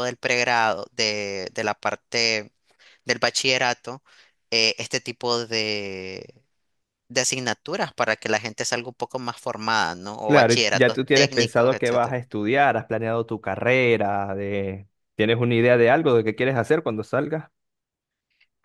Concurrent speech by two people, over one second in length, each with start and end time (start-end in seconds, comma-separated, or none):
10.3-12.2